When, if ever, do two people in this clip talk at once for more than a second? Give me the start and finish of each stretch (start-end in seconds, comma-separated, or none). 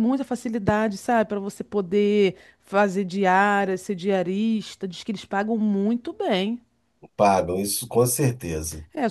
none